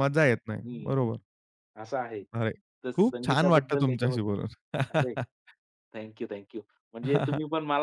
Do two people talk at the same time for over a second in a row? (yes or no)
yes